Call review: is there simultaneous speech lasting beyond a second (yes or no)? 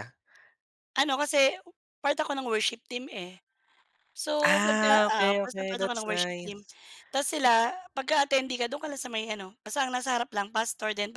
yes